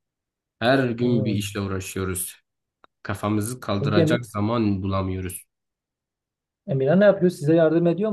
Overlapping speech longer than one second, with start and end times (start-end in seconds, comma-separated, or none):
none